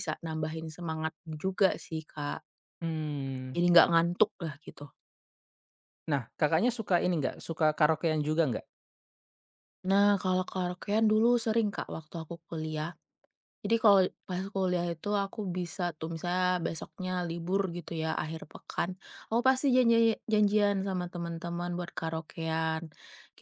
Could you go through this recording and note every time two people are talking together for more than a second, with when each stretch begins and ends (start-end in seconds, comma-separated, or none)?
none